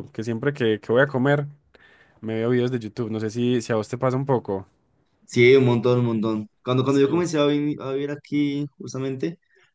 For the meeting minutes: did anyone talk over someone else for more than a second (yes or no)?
no